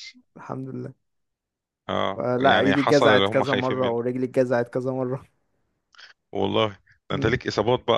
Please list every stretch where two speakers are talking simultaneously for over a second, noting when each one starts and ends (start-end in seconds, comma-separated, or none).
2.2-4.0